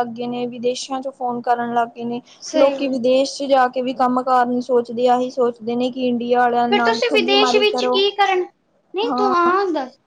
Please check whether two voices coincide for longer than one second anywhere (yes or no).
no